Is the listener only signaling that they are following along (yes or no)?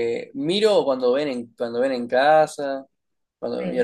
yes